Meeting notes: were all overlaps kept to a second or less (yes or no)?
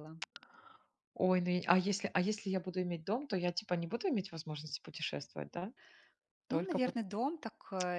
yes